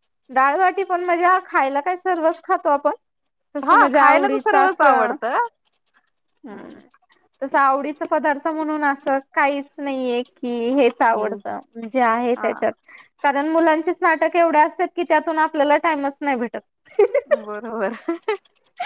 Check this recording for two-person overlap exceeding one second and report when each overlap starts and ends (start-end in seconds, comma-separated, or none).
3.6-5.2